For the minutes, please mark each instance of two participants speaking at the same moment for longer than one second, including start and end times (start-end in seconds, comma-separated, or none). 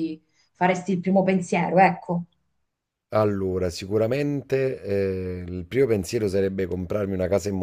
none